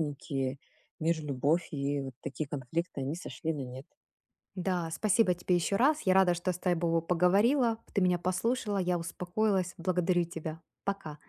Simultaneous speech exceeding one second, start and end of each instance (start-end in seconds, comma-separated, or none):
none